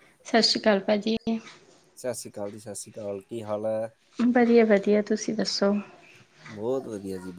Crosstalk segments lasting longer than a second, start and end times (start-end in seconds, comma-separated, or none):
none